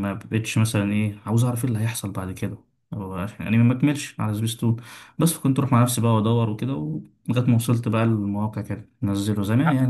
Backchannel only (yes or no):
yes